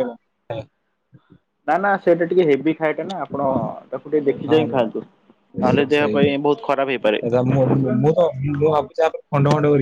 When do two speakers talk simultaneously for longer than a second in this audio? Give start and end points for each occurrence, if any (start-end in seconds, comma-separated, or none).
5.7-7.2